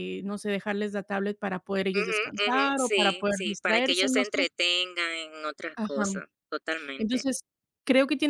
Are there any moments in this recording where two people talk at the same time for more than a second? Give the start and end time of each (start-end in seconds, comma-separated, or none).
1.9-4.4